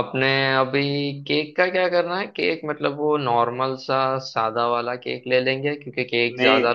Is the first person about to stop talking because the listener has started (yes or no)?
no